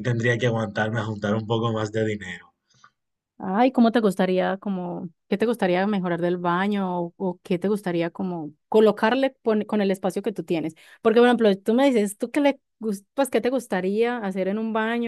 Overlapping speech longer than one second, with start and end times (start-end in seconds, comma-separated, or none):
none